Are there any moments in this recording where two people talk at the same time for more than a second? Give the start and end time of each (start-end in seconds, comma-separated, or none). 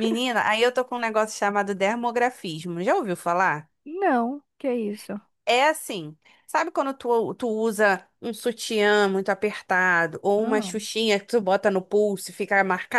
none